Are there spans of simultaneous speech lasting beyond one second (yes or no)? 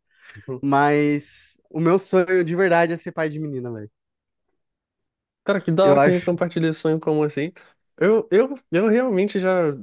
no